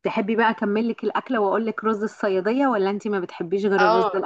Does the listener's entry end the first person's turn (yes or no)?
yes